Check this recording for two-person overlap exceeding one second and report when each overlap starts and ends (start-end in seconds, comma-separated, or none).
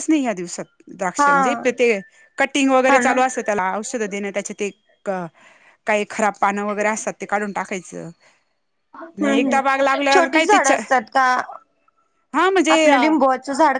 9.2-10.6